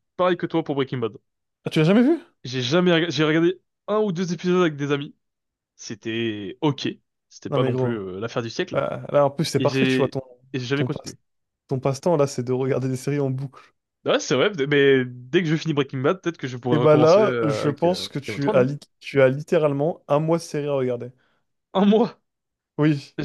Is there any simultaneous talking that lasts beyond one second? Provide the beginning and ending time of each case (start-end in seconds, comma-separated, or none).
16.7-18.7